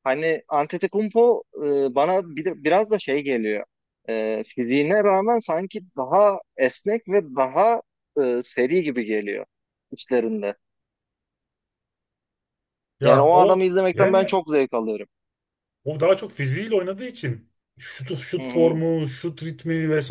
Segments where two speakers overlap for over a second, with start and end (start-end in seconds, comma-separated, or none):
13.0-14.4